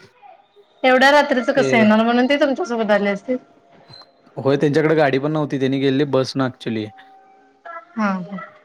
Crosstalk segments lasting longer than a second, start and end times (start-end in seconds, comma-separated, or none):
none